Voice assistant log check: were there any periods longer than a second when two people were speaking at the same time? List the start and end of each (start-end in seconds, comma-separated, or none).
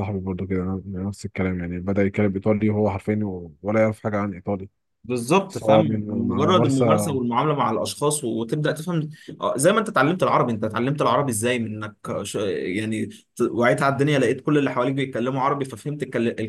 5.5-7.2